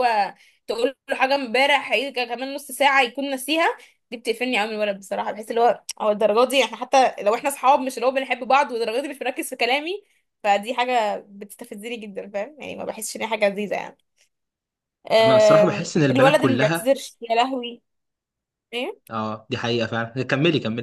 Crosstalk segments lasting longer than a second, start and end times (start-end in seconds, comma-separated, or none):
15.2-16.9